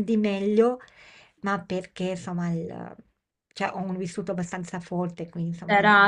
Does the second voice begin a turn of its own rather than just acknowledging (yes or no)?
yes